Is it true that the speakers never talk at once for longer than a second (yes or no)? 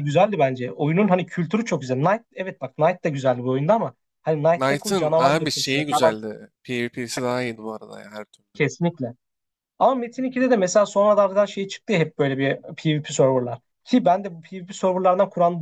no